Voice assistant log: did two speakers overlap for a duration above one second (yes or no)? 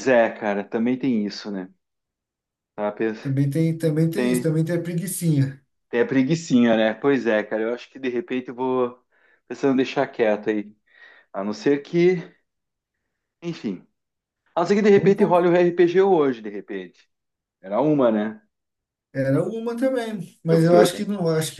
no